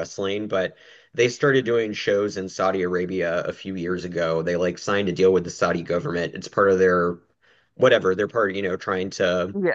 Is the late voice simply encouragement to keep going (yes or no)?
yes